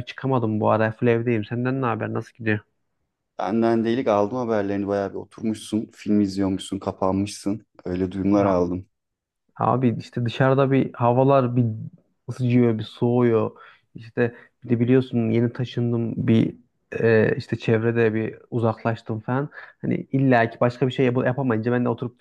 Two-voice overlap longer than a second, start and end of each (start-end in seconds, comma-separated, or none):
none